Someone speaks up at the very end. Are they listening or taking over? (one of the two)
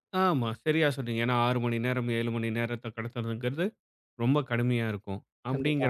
listening